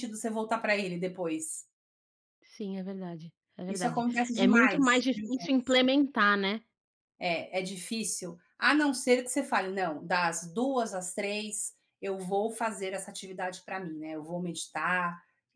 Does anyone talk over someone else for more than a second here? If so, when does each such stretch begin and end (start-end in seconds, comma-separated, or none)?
3.7-5.0